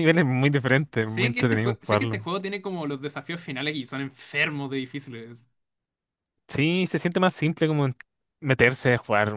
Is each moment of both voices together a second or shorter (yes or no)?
no